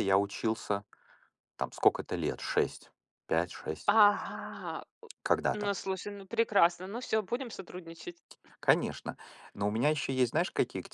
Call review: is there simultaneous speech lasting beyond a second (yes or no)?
no